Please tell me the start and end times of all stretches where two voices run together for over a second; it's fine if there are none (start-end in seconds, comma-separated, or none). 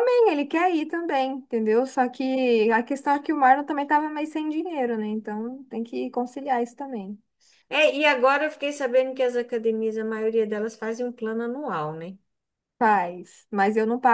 none